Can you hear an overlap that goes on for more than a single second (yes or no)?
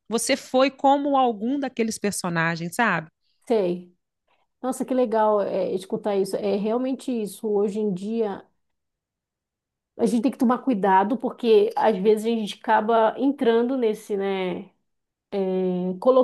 no